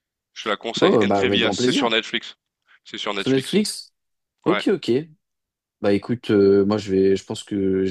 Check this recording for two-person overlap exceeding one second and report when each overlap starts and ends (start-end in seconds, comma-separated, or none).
0.8-2.0